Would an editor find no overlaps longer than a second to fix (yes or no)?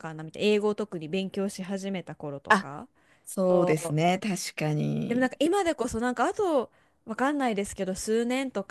yes